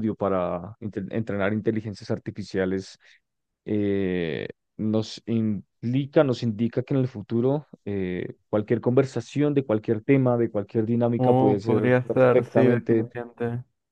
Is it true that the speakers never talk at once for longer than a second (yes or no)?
no